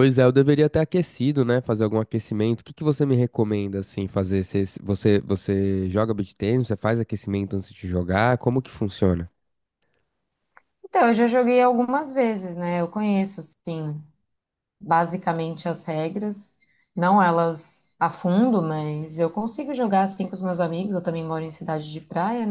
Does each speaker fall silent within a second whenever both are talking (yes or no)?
yes